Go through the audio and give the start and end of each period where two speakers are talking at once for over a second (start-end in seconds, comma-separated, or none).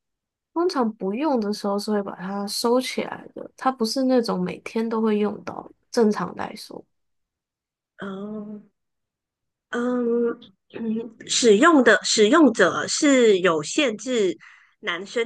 none